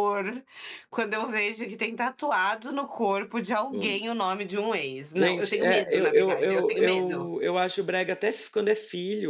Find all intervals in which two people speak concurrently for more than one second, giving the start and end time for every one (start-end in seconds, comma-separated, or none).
5.2-7.3